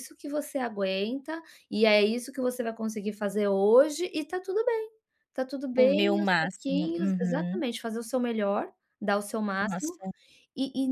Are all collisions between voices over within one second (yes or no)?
no